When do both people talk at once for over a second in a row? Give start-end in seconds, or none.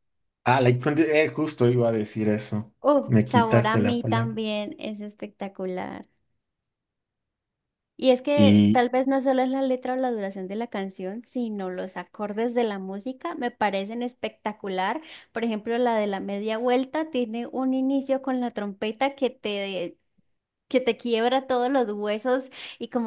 2.8-4.4